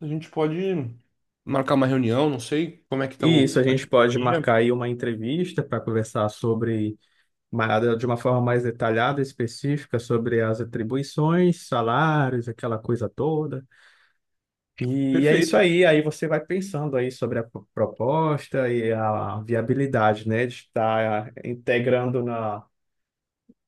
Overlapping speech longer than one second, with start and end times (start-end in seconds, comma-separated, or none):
3.2-4.5